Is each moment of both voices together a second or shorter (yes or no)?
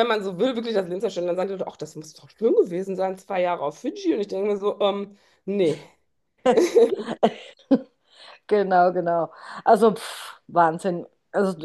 yes